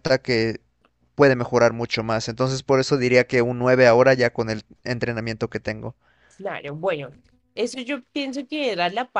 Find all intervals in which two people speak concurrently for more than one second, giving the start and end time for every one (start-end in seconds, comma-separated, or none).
none